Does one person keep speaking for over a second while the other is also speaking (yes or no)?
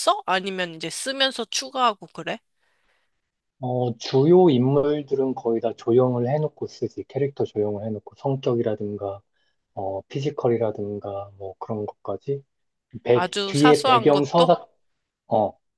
yes